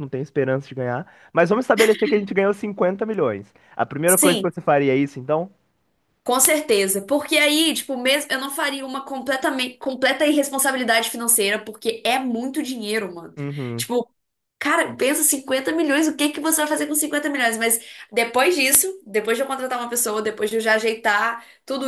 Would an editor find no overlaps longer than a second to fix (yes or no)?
yes